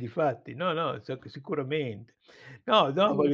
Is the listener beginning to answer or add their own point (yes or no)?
no